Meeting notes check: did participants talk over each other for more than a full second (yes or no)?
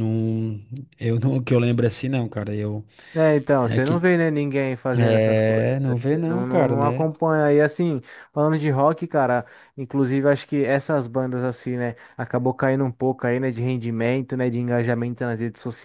yes